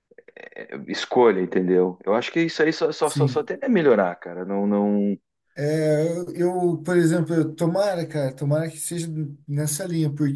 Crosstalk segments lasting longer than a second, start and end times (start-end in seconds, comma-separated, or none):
none